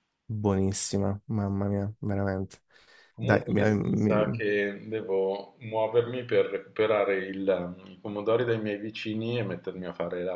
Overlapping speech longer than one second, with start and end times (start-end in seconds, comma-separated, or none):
3.2-4.4